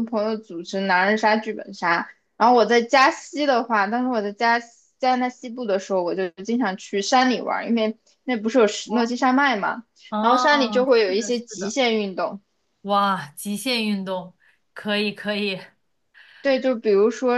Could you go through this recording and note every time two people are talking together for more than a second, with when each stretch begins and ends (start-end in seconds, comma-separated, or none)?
10.1-11.8